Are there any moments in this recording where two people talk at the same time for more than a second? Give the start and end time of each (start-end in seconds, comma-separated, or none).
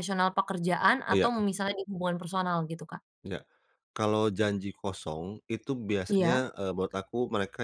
none